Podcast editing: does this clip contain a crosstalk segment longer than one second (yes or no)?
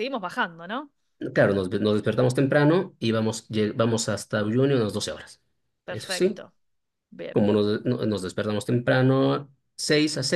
no